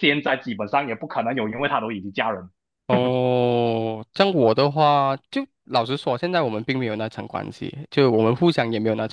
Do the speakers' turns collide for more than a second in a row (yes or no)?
no